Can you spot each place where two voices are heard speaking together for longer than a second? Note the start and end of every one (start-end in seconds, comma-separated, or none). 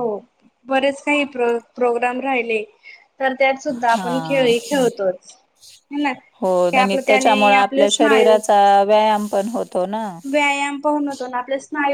6.7-8.4